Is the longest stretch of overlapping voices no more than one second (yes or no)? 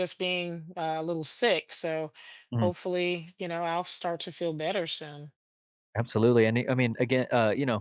yes